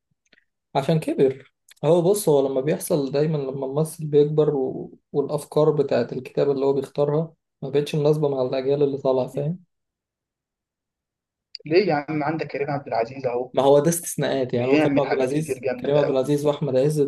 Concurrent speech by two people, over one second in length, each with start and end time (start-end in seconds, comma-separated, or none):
14.5-16.3